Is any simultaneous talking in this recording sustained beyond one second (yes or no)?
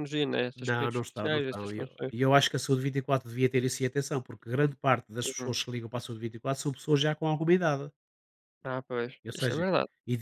yes